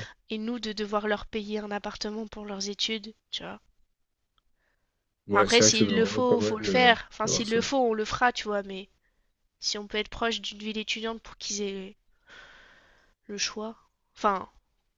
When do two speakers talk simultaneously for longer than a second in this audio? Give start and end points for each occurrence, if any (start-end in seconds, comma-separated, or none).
5.3-7.6